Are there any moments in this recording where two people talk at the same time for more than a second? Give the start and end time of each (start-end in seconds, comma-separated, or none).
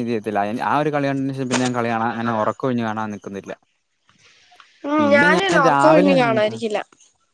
5.0-6.6